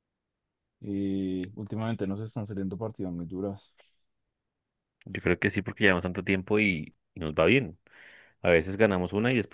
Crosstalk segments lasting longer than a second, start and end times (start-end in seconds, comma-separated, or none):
none